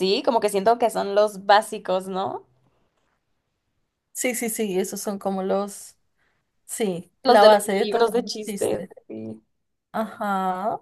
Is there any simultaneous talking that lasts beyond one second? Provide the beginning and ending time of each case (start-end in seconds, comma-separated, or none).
7.2-8.9